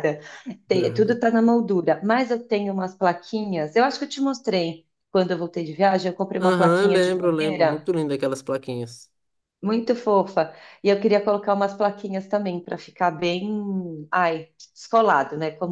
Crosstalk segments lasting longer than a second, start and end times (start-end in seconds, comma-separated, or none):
6.4-7.9